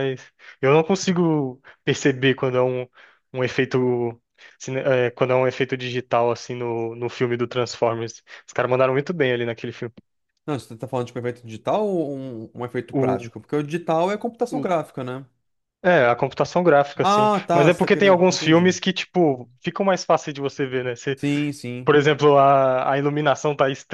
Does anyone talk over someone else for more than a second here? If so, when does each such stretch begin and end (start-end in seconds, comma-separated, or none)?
17.0-18.8